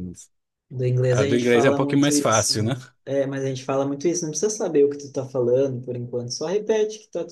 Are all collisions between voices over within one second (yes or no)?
no